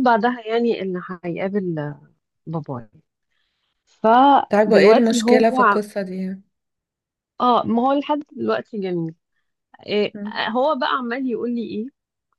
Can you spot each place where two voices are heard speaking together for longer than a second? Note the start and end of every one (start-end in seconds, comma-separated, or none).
4.5-5.8